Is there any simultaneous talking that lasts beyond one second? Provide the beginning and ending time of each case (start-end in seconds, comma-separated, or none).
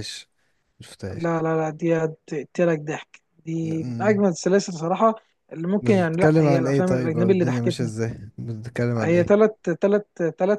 5.8-7.9